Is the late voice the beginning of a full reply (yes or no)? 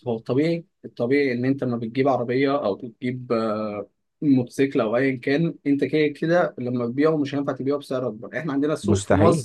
no